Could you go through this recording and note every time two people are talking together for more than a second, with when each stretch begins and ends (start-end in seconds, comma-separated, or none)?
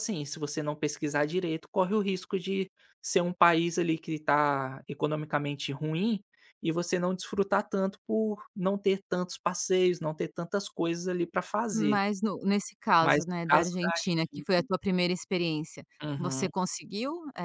13.0-14.4